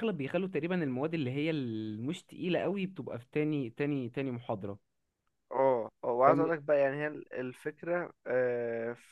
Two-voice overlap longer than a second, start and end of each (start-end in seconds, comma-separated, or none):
none